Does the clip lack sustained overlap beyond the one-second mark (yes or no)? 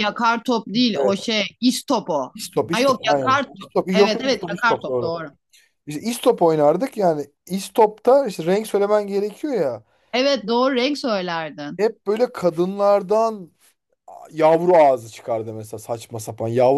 no